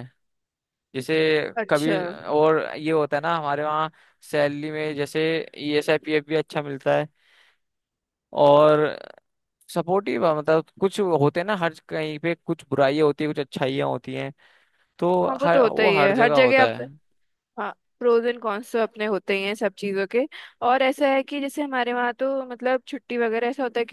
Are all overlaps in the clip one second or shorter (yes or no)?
no